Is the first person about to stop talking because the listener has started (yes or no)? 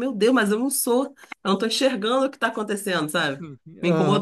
yes